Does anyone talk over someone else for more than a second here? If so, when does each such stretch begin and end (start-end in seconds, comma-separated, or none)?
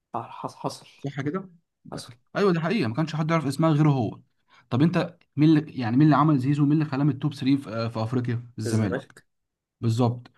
none